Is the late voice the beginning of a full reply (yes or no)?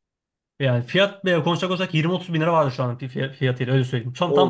yes